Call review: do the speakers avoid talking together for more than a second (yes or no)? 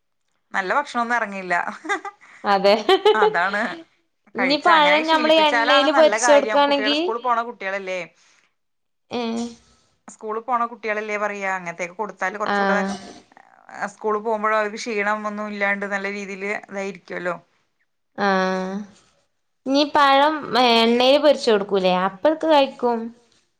no